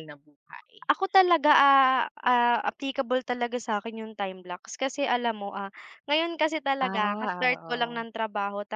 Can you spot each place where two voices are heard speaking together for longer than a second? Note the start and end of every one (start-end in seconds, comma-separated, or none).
6.8-8.1